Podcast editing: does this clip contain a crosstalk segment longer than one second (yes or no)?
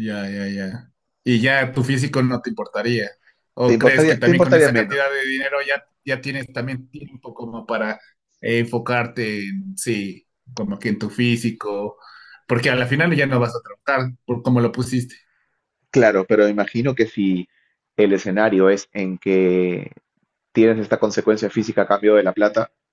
yes